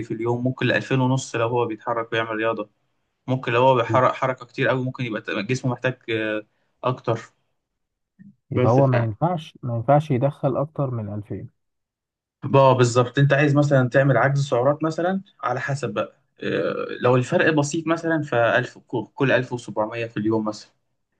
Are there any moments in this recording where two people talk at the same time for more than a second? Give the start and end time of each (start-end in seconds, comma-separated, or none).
none